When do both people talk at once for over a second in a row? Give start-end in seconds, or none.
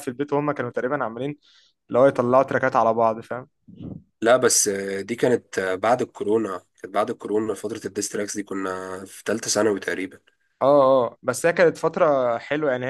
none